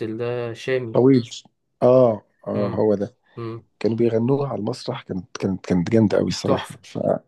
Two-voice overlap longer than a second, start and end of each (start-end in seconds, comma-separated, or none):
none